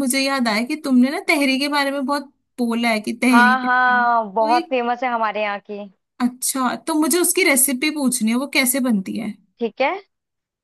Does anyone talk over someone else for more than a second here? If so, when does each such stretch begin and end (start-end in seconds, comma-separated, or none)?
3.3-4.7